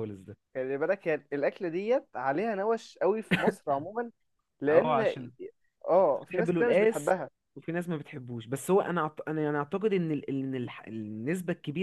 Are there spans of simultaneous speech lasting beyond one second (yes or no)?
yes